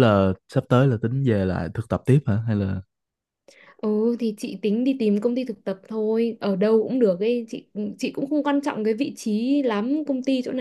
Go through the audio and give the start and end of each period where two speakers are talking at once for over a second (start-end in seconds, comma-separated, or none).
none